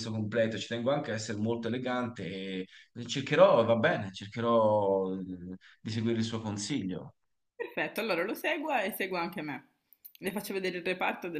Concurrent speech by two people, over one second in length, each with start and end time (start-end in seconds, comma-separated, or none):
none